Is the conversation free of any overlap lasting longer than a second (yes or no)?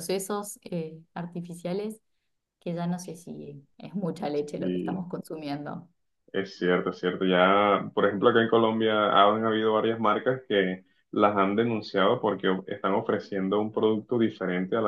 yes